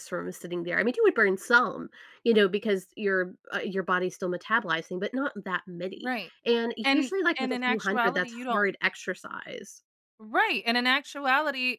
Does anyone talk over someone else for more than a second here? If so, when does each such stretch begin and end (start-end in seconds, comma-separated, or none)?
6.8-8.7